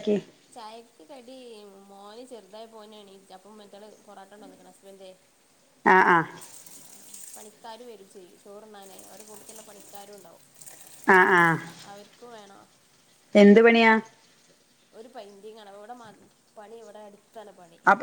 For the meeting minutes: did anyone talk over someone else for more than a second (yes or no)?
no